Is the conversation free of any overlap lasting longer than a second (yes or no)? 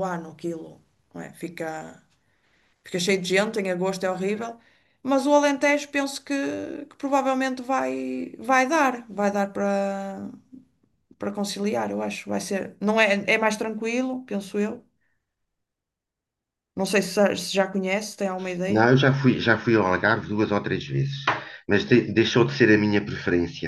yes